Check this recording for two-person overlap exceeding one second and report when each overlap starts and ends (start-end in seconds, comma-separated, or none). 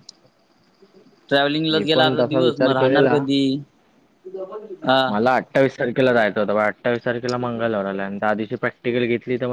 1.7-3.2